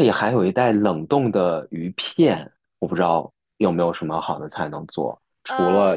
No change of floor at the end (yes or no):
yes